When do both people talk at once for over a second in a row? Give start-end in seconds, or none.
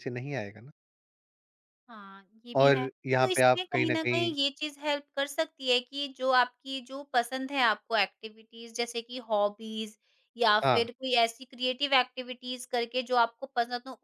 2.6-4.3